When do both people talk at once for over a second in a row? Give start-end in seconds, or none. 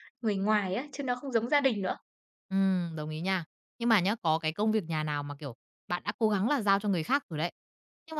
none